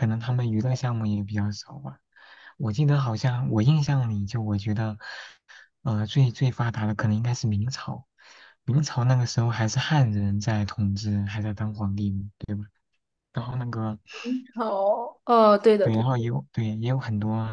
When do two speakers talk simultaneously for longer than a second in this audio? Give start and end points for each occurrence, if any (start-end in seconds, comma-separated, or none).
none